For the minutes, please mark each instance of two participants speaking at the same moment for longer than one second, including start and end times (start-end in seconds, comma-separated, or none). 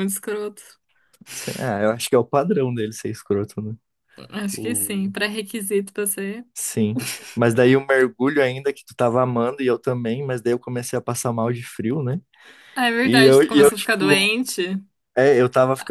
13.0-14.3